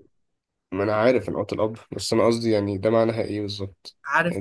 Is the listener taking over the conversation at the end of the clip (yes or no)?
yes